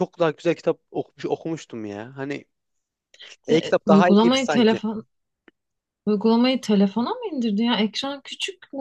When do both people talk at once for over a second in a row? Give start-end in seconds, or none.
3.5-4.8